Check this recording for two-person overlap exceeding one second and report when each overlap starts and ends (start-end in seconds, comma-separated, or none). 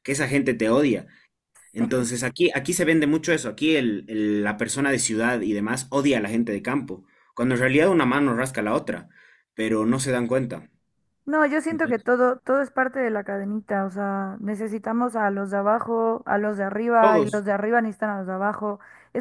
none